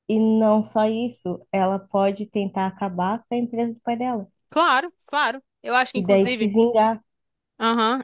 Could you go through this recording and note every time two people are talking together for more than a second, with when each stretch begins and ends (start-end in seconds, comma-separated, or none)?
none